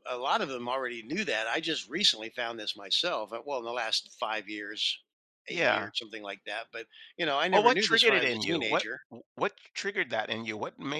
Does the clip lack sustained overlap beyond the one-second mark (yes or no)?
no